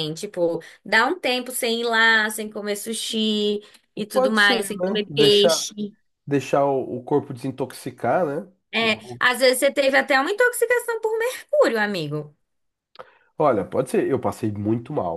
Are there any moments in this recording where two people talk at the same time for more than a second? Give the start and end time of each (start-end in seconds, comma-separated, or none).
4.1-5.7